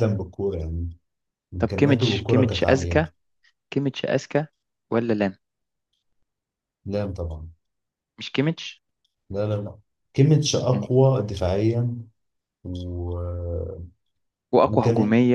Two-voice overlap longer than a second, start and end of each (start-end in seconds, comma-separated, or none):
1.6-3.0